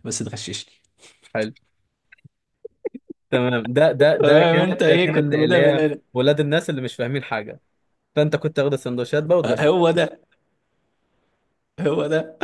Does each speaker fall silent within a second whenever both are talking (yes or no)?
no